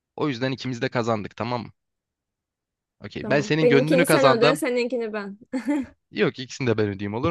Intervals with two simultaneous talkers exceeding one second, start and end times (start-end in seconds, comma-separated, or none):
3.2-4.6